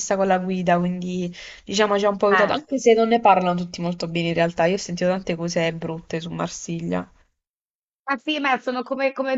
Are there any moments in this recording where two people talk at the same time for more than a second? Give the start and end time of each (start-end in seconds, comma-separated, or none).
none